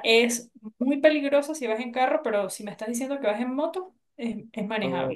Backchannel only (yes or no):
no